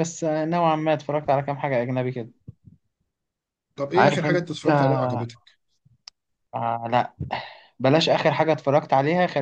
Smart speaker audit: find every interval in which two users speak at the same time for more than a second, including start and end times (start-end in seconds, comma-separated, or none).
3.9-5.3